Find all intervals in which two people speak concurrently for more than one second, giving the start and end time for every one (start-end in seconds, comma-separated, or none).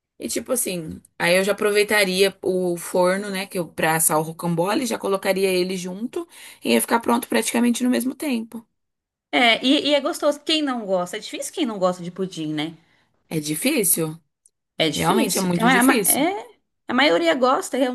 14.9-16.3